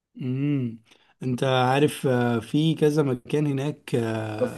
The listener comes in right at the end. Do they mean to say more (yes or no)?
yes